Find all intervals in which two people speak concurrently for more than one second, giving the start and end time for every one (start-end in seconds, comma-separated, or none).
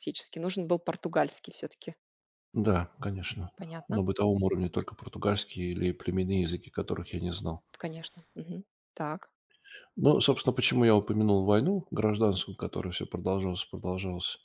none